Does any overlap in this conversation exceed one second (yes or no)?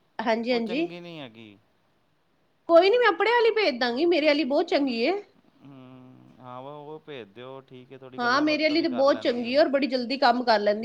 yes